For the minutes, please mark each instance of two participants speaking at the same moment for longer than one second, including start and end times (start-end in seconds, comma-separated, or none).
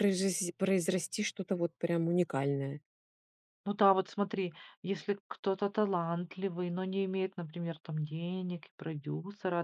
none